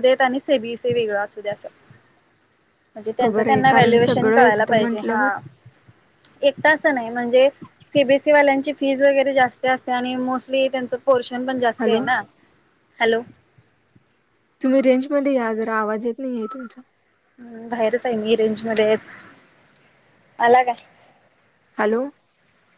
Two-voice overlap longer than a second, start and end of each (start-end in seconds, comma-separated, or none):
3.2-5.3